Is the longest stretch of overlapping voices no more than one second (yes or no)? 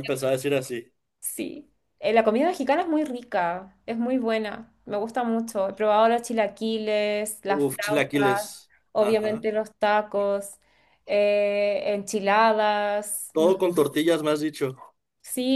no